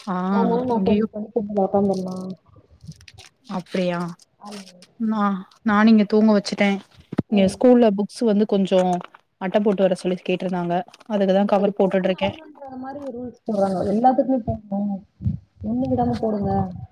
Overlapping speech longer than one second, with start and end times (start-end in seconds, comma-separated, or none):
none